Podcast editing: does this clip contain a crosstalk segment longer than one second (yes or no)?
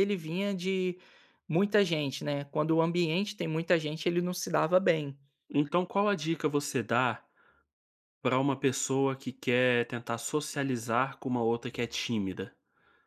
no